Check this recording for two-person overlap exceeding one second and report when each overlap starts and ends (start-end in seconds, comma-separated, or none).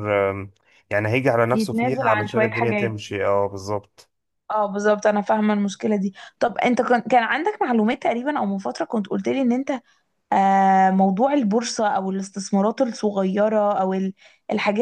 1.5-3.0